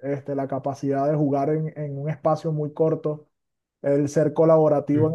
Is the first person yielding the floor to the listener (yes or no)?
no